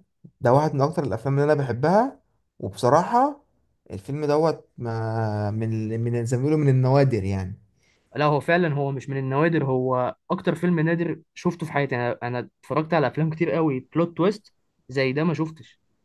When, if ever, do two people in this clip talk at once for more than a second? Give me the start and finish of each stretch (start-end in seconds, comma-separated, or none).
none